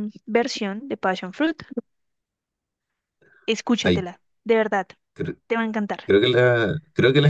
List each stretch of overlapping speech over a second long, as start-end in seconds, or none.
none